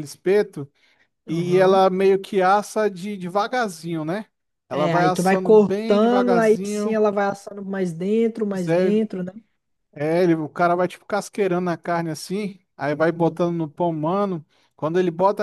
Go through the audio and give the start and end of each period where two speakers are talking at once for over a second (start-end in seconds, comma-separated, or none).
4.7-7.0